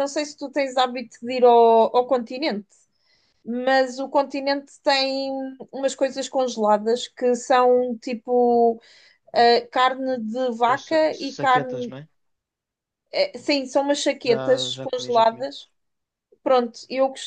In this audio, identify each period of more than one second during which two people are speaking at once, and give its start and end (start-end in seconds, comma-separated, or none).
10.7-11.9, 14.2-15.5